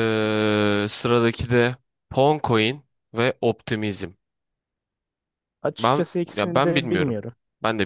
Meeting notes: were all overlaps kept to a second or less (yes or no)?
no